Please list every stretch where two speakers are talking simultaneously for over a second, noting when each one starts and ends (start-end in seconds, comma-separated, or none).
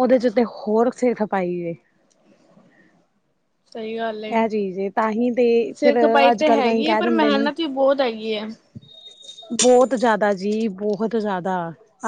5.8-7.5